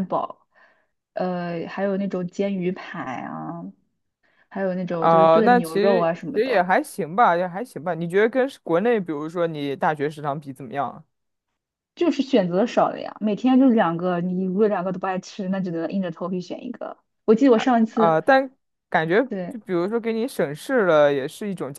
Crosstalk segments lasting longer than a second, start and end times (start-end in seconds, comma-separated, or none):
5.0-6.7